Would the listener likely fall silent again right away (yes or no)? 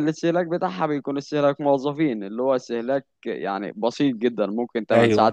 yes